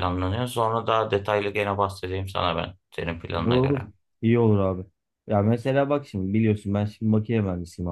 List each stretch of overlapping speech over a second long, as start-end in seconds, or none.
none